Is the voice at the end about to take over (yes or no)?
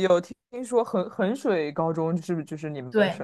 yes